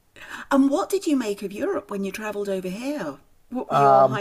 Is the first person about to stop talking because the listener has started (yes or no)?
yes